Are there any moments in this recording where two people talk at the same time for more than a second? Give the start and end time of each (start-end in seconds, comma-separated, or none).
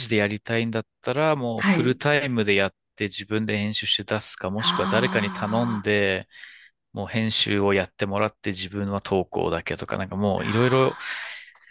4.6-5.9